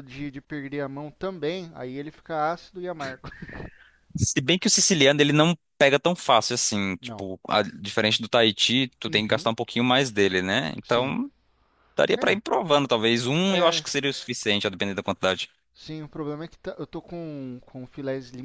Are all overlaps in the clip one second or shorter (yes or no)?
yes